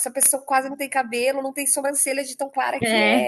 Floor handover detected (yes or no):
yes